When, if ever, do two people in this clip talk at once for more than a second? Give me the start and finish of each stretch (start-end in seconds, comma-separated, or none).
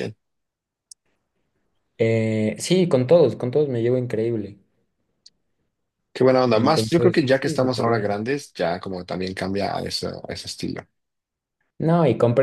6.5-8.2